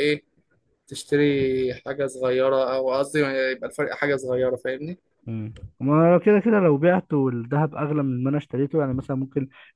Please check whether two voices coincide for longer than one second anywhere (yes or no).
no